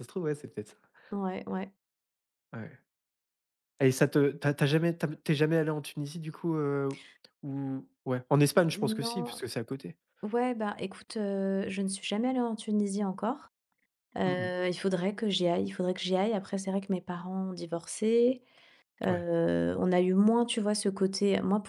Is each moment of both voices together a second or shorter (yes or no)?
yes